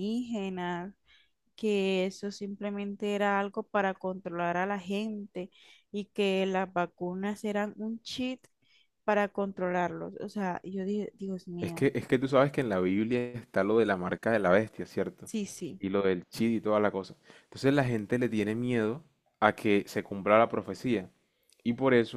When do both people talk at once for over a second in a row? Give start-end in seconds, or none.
none